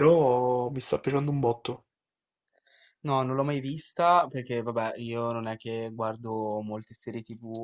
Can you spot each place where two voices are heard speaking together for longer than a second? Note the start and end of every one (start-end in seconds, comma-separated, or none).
none